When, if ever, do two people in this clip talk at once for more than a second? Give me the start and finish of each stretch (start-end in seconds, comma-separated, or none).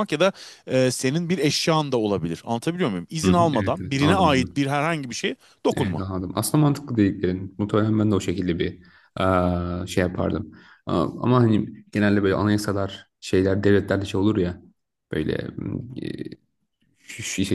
3.2-4.6